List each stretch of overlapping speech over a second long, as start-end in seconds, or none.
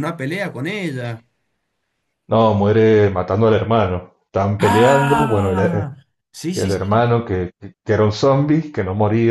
4.6-5.8